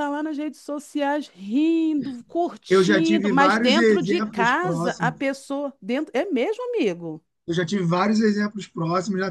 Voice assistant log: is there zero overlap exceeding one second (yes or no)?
no